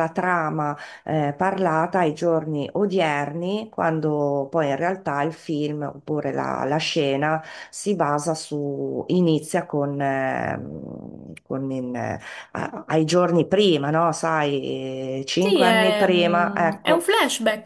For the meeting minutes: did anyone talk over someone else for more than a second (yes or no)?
yes